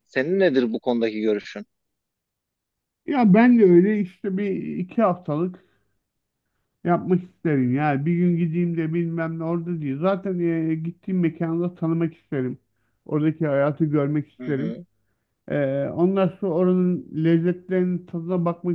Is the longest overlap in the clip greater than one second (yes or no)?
no